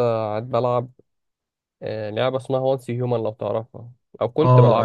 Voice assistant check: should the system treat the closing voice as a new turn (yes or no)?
yes